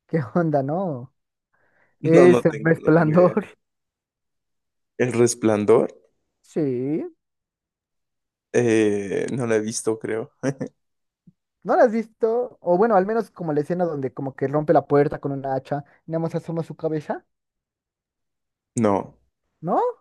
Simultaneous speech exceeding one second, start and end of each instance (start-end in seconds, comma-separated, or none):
2.0-3.4